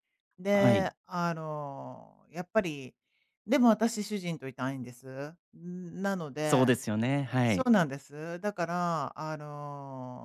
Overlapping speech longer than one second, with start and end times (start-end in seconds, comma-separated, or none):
none